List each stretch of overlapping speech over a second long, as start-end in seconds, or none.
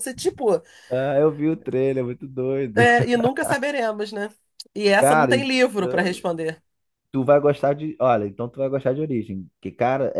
5.0-6.2